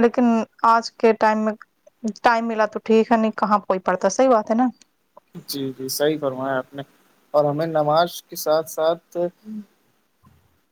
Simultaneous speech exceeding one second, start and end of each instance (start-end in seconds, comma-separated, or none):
none